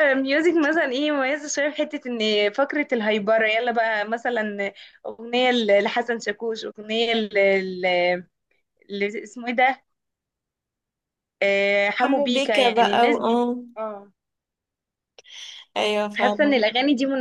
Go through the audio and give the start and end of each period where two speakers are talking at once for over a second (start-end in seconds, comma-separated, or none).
12.0-13.4